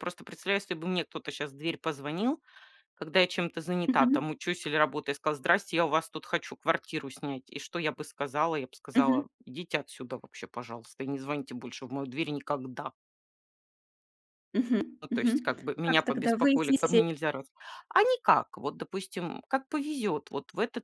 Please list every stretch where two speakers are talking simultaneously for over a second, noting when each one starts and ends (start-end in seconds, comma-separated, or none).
15.0-17.0